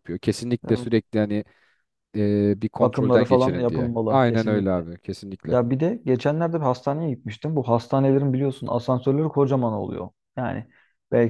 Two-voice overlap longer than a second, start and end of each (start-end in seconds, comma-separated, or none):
2.8-4.8